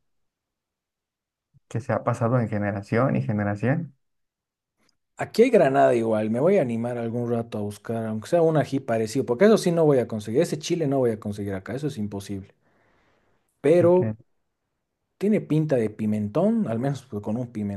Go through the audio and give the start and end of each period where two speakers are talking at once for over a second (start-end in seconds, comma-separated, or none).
none